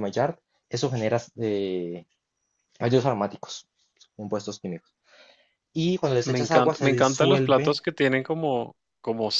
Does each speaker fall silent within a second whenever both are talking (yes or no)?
no